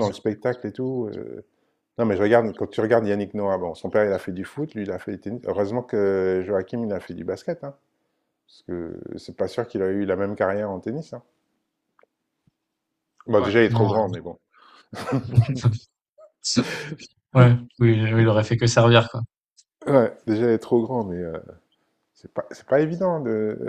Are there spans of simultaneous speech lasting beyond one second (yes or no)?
no